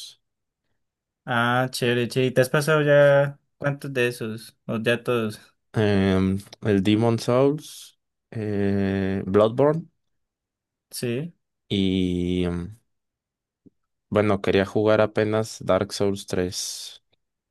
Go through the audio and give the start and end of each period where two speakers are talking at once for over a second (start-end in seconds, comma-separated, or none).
none